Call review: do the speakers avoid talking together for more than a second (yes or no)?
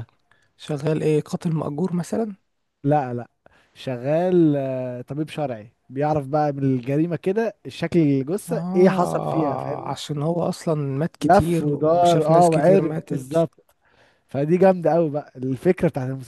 no